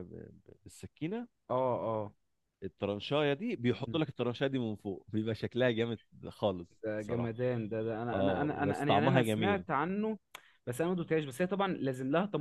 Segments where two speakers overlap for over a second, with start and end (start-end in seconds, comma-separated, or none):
8.1-9.6